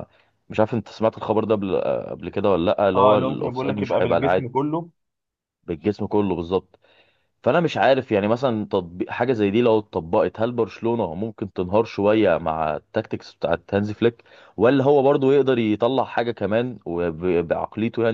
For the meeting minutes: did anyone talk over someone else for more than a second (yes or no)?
yes